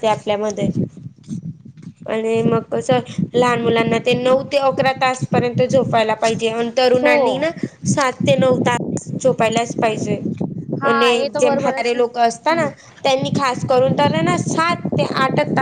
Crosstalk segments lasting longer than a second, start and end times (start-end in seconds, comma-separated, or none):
10.9-12.7